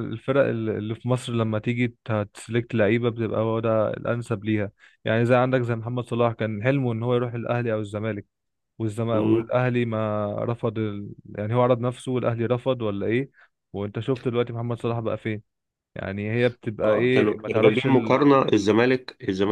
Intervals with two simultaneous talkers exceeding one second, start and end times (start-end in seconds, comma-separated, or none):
16.8-18.2